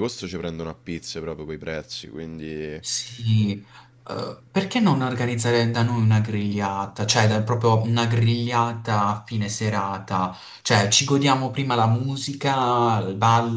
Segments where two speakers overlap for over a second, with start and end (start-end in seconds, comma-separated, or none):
none